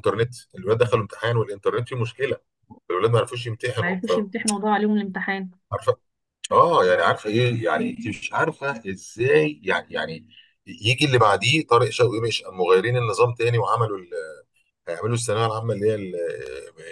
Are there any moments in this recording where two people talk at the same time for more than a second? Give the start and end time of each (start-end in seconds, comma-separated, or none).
none